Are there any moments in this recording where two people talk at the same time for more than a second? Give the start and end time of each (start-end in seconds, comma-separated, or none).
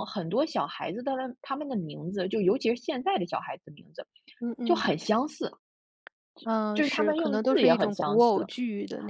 6.7-8.5